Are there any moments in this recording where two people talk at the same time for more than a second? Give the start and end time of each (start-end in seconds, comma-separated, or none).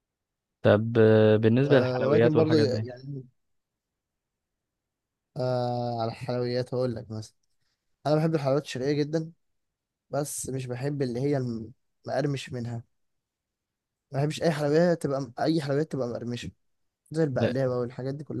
1.6-2.9